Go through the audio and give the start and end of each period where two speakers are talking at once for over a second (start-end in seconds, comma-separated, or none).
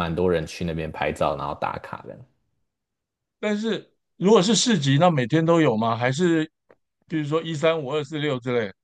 none